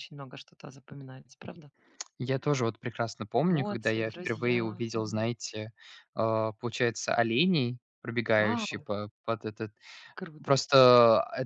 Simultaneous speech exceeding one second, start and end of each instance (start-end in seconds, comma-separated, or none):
3.5-5.3